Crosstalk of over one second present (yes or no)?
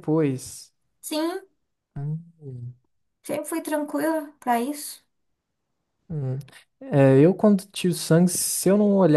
no